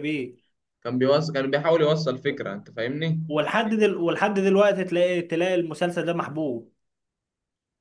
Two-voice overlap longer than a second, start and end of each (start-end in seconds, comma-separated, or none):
none